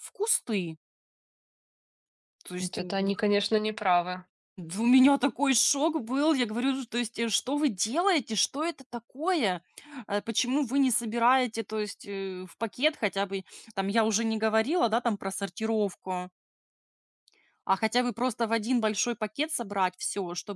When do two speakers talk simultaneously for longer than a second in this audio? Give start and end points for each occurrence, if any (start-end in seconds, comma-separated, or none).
none